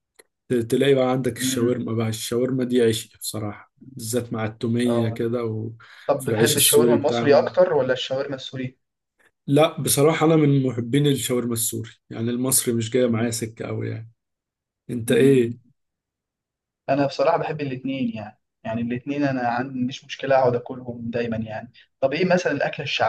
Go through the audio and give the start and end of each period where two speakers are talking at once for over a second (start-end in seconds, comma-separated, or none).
6.1-7.5